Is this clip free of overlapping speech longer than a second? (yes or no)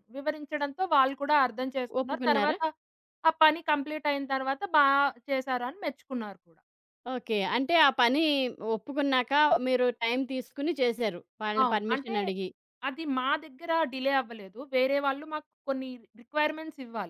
yes